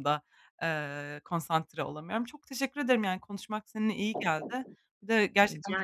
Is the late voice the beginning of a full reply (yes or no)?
no